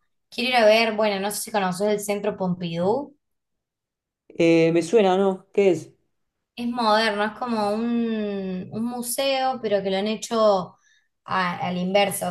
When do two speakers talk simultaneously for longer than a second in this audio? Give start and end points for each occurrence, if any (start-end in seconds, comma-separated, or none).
none